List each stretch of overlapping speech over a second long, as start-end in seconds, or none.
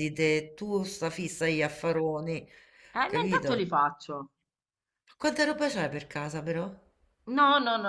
none